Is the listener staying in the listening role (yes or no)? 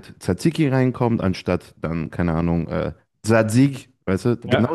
yes